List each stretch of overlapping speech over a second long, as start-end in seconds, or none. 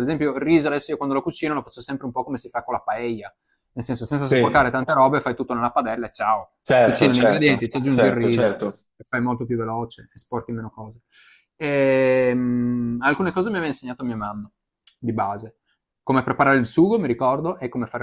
6.6-8.7